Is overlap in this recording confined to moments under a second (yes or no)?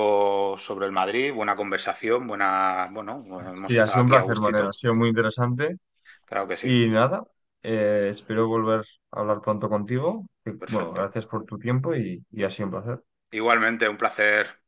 no